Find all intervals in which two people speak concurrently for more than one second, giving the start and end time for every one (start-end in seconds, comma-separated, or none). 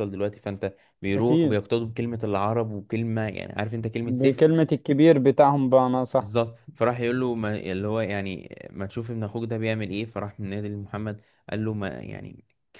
none